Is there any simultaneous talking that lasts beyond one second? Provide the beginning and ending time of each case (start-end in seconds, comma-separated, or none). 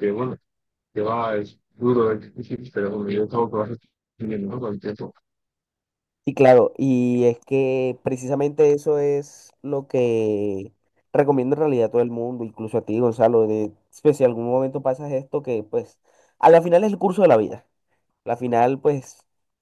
none